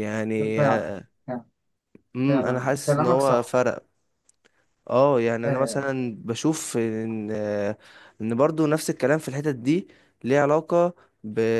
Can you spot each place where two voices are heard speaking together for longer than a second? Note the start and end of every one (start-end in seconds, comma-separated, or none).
2.3-3.6